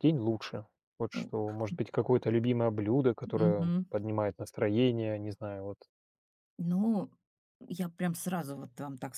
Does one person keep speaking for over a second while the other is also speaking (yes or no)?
no